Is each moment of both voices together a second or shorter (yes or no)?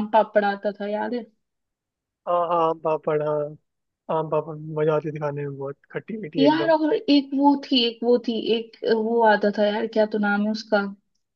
yes